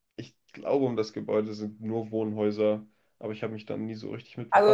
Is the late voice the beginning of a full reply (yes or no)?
yes